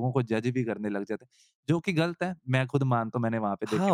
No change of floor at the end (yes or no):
no